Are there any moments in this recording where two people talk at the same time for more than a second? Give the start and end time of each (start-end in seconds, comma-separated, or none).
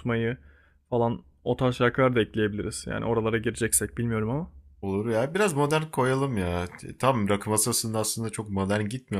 none